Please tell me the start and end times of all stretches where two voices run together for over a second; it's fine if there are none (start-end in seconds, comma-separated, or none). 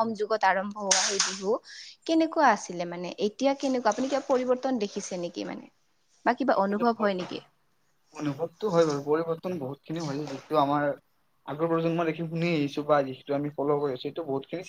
none